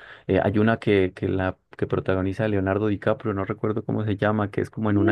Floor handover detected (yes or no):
yes